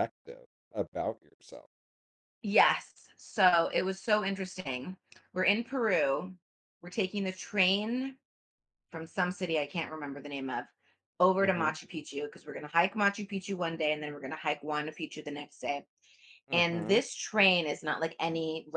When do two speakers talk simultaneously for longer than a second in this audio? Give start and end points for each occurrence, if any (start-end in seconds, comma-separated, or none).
none